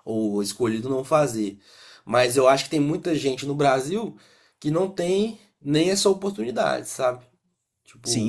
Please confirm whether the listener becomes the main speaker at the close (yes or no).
yes